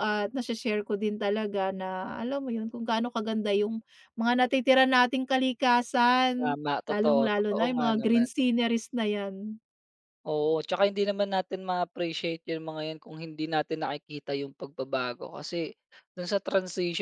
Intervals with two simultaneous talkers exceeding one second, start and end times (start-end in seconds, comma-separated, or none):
6.4-8.3